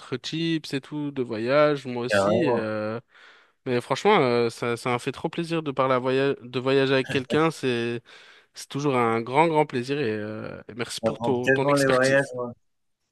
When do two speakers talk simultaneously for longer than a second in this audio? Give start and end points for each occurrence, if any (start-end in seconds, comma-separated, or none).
11.0-12.3